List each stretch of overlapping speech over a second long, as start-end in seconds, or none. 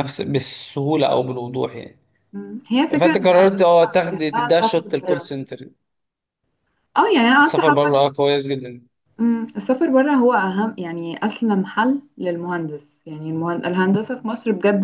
3.0-5.3